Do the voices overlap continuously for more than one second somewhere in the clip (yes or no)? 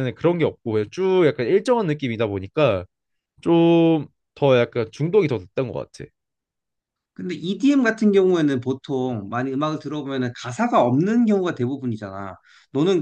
no